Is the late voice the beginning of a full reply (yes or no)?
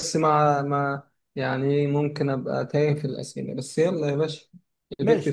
yes